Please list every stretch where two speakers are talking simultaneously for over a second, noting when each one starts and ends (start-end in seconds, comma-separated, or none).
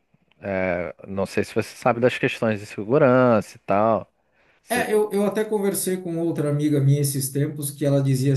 none